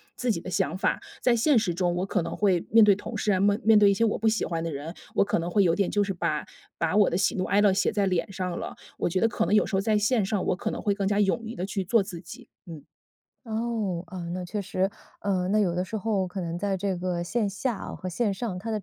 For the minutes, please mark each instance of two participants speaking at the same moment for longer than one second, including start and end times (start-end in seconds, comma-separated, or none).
none